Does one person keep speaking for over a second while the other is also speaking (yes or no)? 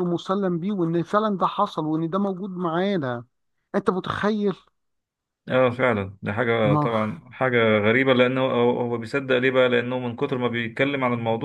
no